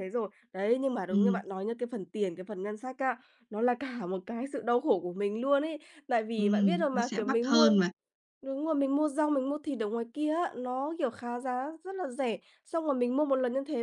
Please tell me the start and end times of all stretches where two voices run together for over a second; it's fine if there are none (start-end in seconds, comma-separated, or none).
6.3-7.7